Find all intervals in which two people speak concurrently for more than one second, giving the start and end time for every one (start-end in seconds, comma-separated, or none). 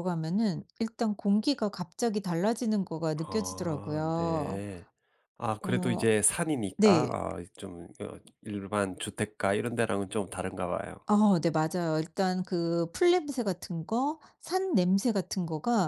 3.3-4.6